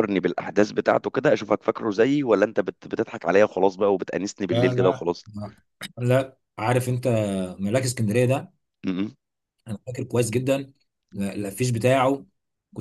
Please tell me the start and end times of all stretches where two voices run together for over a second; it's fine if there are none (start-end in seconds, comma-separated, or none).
none